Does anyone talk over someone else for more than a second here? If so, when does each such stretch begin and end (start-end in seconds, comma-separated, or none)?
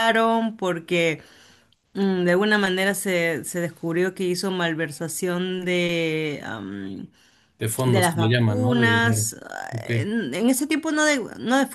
7.8-9.3